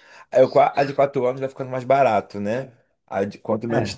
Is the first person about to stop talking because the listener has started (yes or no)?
no